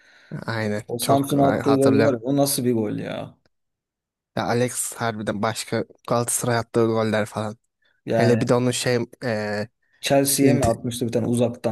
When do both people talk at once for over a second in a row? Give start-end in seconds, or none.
0.9-2.2